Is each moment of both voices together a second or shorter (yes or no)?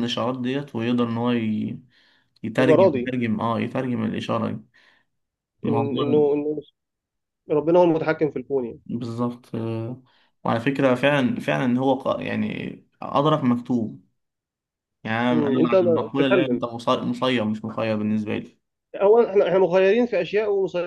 no